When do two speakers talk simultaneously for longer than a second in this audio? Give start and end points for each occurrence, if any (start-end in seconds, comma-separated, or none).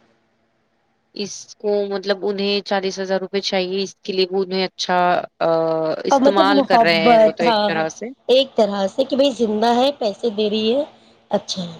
6.1-7.5